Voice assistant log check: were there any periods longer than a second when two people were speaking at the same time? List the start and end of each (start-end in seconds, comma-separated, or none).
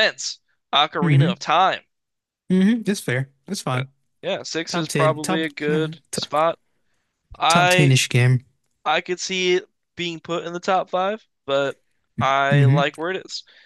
4.7-6.2